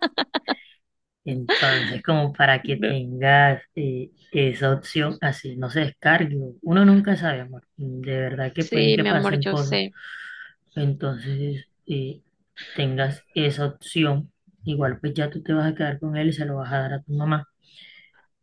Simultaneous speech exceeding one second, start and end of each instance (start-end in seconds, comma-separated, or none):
8.6-9.8